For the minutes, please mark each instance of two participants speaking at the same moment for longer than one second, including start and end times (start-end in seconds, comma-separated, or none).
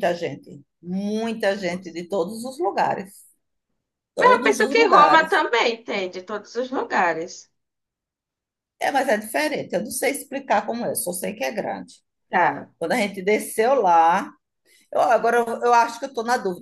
4.2-5.4